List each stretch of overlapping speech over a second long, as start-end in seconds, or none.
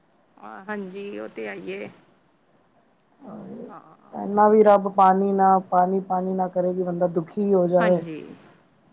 none